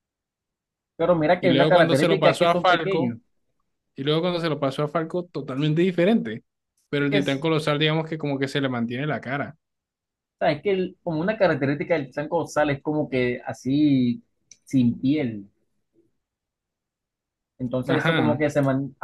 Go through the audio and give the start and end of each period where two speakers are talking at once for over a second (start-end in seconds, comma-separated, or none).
1.4-3.1